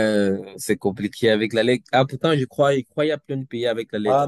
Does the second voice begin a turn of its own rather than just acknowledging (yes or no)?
yes